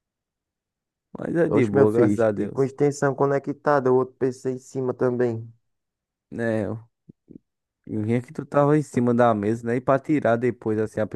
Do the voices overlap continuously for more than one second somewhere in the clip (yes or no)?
yes